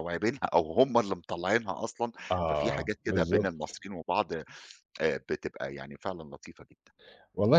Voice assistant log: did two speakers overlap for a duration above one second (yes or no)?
yes